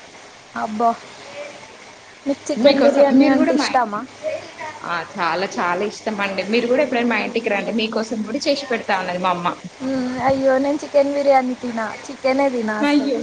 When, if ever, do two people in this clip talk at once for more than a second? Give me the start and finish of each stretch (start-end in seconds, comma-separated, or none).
none